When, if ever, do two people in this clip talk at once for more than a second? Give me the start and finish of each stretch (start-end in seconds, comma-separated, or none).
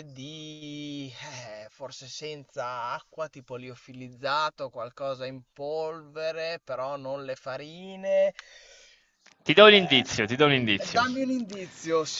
none